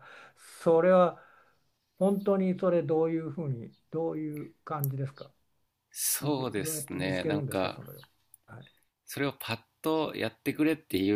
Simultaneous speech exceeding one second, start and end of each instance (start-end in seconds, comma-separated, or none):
6.2-7.8